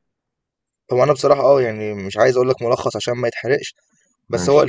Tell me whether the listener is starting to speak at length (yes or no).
no